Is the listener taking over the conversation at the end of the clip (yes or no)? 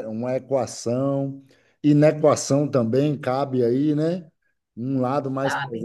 no